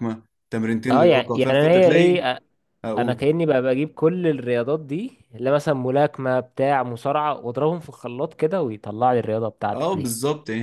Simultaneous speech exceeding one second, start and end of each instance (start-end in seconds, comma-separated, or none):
0.9-2.2